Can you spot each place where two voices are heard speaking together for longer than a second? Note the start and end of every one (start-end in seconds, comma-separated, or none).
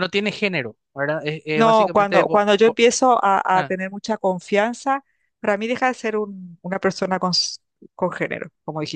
1.5-2.8